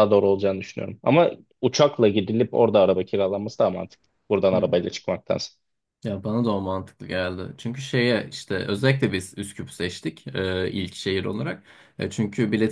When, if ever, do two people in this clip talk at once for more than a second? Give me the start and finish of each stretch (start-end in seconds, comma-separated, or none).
none